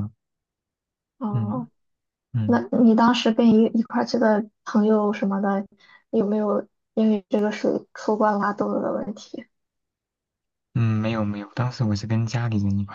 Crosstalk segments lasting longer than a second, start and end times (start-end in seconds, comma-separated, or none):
none